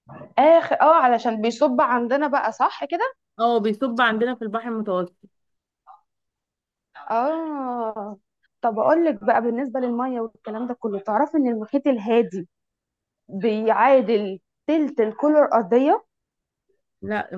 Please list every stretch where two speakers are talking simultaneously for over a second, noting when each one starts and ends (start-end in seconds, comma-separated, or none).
none